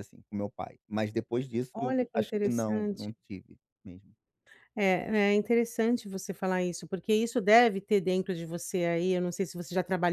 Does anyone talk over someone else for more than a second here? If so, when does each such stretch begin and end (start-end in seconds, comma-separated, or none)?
1.7-3.1